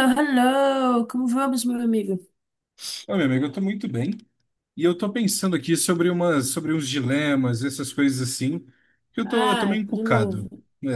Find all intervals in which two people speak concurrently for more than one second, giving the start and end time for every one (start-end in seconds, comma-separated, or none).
9.2-10.4